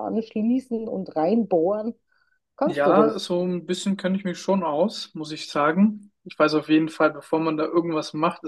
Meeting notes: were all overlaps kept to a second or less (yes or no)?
yes